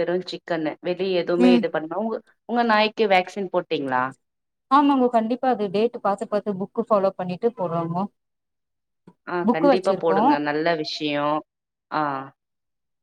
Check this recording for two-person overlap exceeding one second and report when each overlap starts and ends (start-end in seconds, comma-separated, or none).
none